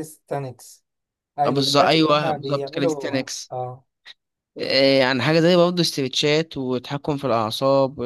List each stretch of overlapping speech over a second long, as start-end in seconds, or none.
1.4-3.5